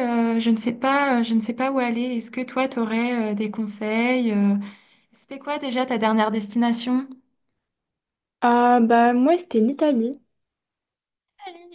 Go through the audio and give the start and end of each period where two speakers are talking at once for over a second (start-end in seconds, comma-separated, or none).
none